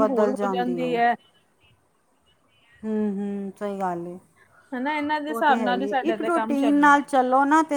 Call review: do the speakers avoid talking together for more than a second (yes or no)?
no